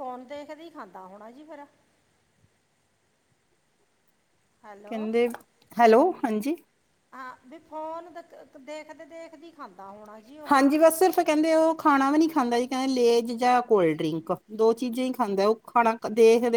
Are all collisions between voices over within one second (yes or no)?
yes